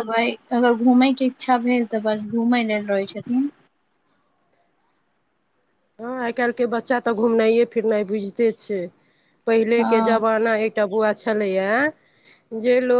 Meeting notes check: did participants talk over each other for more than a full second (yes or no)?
no